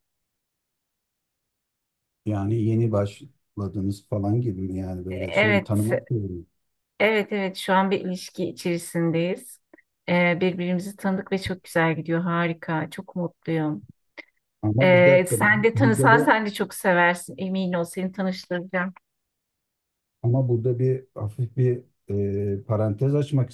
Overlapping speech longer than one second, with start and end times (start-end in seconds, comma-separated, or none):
14.8-16.3